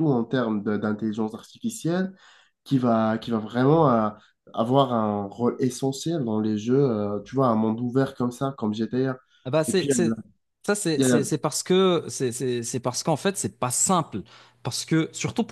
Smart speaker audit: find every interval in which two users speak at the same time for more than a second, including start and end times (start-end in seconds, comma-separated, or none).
none